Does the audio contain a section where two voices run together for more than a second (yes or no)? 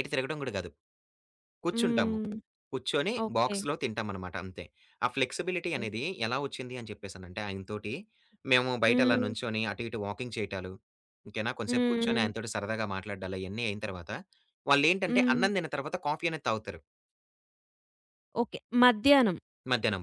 no